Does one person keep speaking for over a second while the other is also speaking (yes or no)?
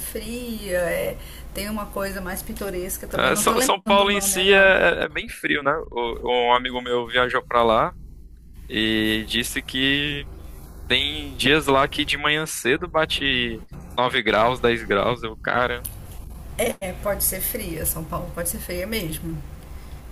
yes